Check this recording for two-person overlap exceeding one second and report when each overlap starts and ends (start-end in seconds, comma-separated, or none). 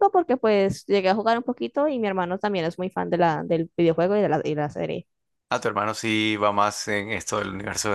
none